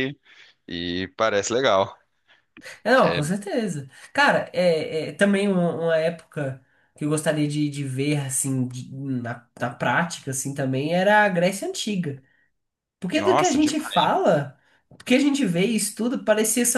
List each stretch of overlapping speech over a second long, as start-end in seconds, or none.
none